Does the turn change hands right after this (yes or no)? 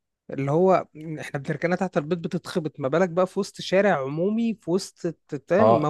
yes